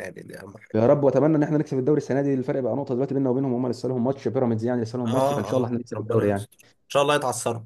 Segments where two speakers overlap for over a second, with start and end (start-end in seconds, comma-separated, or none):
5.1-6.5